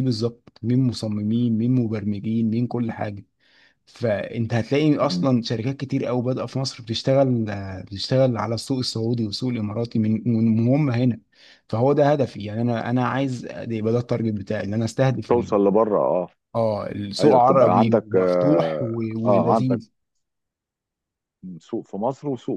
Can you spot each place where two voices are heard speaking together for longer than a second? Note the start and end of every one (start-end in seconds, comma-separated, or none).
17.2-19.8